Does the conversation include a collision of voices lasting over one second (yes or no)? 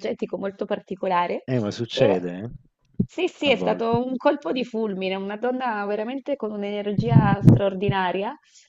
no